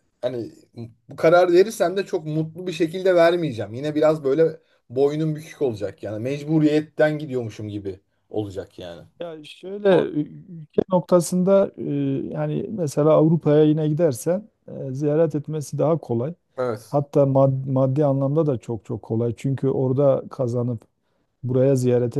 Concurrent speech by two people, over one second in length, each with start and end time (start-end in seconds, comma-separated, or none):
none